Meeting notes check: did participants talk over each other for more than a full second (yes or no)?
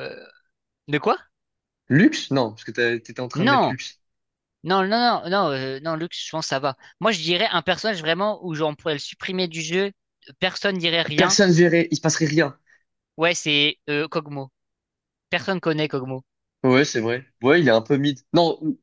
no